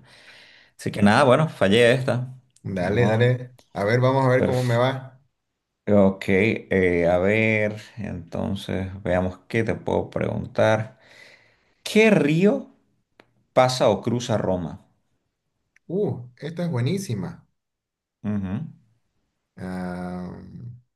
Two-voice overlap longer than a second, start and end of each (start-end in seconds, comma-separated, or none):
none